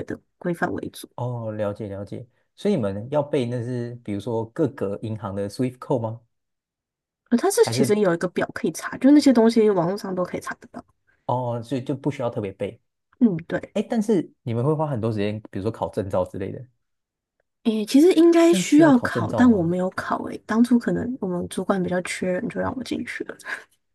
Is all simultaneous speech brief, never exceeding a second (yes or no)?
no